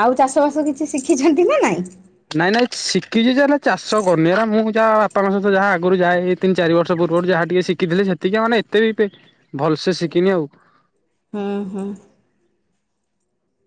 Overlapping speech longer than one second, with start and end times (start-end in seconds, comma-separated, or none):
none